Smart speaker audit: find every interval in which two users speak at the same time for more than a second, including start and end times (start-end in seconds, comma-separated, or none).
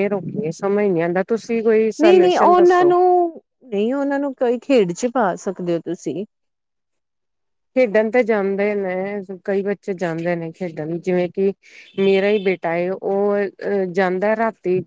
none